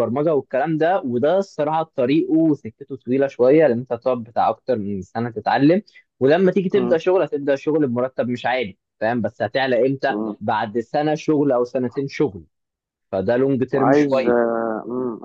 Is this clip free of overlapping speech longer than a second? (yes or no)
yes